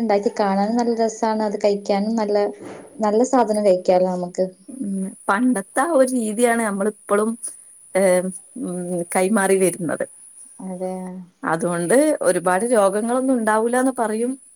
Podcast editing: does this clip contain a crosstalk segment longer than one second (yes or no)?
no